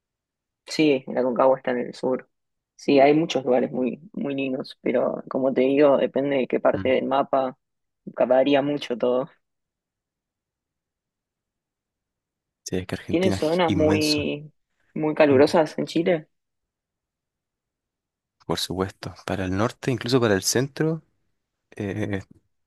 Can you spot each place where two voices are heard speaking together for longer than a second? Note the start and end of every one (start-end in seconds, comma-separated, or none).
13.1-14.3